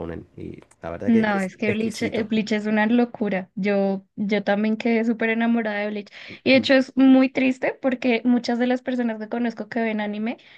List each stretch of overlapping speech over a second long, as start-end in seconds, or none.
1.1-2.3